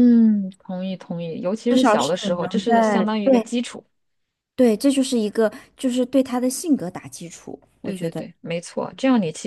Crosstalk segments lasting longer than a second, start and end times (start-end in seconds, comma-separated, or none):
1.7-3.5